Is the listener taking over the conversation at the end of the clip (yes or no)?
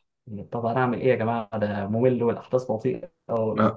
yes